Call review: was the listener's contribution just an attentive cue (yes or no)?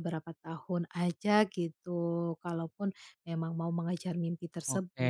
no